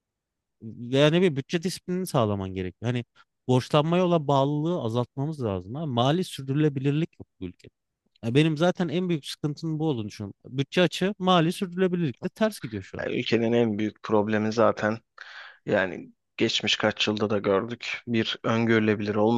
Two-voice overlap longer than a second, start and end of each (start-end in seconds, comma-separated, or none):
none